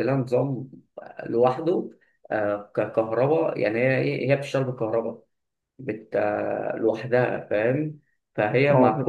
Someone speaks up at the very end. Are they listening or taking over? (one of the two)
taking over